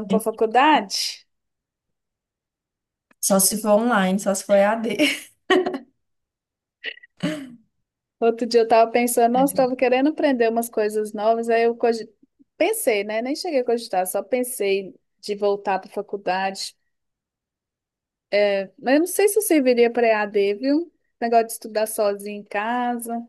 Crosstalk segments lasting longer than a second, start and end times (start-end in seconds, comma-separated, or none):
none